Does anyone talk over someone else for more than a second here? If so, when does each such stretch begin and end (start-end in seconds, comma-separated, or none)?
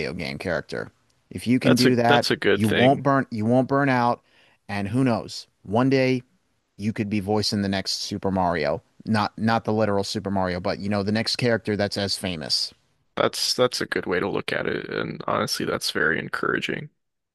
1.6-3.1